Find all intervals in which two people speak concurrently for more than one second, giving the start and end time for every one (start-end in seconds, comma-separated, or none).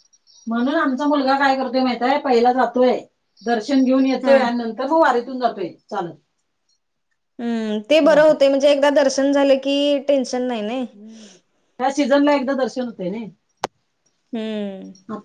none